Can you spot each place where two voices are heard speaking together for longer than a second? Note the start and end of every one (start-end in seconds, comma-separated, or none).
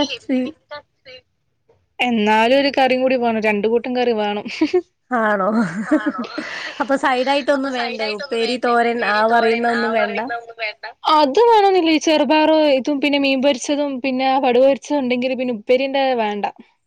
7.6-10.2